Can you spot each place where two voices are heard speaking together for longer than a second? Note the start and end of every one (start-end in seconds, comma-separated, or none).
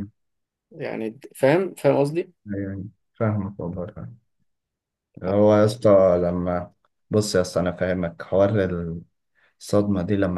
none